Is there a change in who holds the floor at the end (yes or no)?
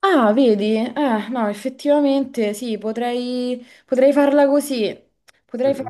yes